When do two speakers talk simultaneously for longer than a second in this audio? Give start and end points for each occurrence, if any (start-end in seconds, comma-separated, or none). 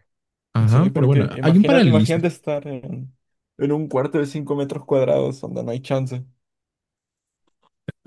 0.7-2.2